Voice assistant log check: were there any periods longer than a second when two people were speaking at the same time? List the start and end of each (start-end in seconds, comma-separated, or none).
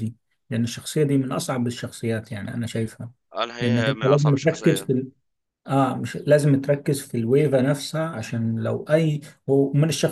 3.6-4.9